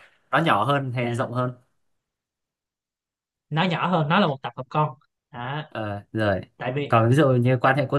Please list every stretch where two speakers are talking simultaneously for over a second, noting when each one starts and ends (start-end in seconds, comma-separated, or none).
none